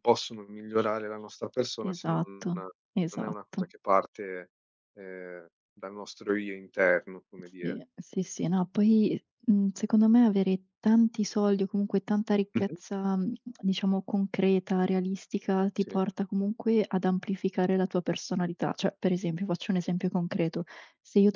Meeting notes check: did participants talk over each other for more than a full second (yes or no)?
yes